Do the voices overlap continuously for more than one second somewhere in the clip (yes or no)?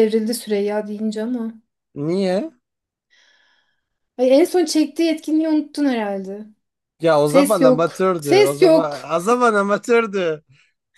yes